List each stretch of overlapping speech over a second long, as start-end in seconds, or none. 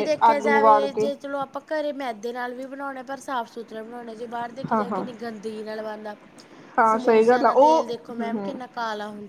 6.9-8.6